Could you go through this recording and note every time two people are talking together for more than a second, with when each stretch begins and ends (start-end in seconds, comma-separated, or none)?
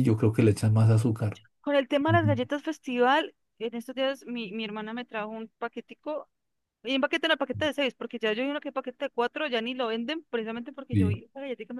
none